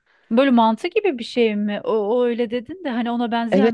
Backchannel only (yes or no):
no